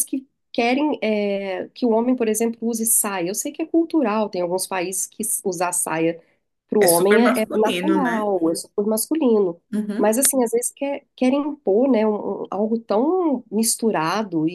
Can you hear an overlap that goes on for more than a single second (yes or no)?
yes